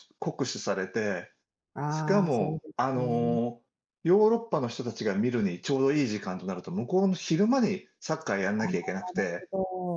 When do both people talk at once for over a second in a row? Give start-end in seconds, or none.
1.9-3.4